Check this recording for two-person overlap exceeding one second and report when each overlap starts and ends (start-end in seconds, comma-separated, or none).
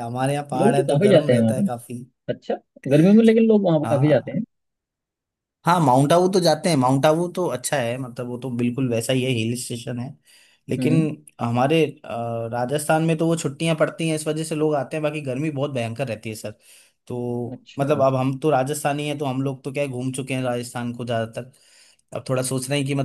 0.5-1.9